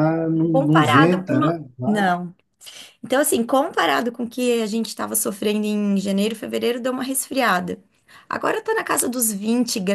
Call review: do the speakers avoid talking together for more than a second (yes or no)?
no